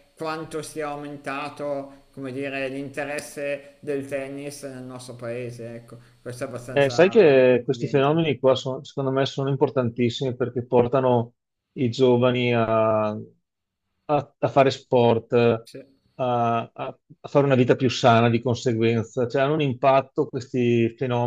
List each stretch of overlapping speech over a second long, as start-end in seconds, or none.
6.8-8.3